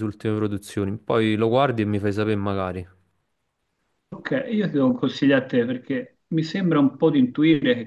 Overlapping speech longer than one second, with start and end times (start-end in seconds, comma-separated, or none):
none